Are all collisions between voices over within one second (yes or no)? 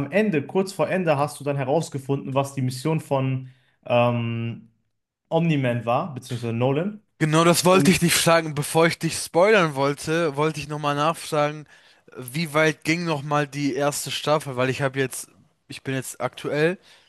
yes